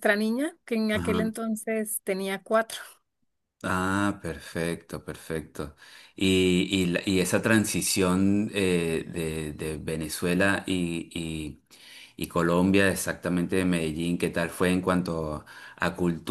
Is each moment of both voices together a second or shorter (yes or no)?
yes